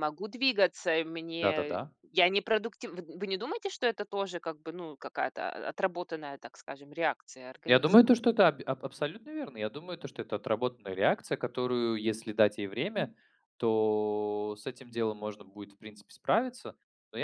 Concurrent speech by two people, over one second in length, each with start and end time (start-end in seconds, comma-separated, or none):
none